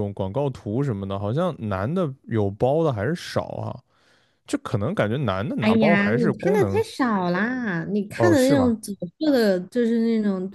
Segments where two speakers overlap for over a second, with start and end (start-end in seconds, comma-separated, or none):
5.6-6.8